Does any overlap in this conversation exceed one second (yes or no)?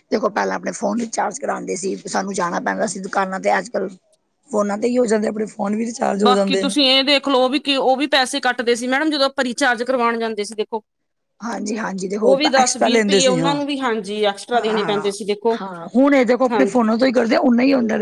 yes